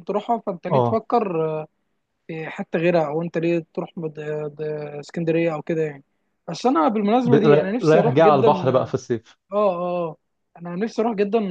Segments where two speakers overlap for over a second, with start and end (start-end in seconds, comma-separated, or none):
7.2-8.9